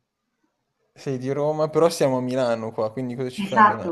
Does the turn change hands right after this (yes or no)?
yes